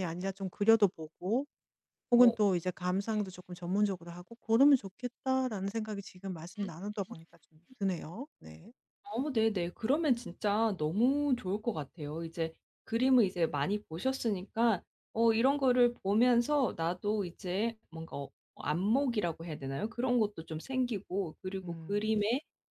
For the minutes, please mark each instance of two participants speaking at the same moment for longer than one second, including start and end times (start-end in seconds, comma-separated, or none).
none